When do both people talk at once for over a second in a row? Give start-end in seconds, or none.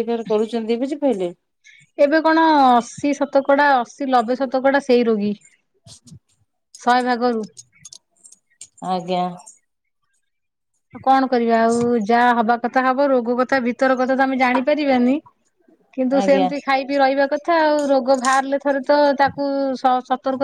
none